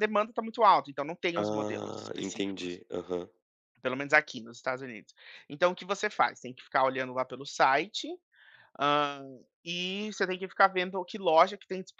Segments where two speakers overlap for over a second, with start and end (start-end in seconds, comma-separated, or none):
1.4-2.8